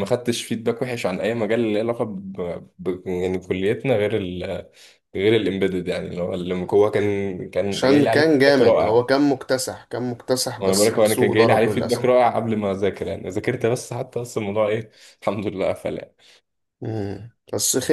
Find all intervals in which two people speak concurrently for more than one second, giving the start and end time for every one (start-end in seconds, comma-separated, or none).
7.7-9.0, 10.6-12.1